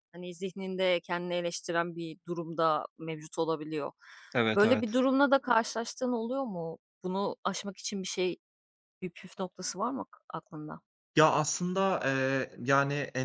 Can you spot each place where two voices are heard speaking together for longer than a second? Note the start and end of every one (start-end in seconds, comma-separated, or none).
none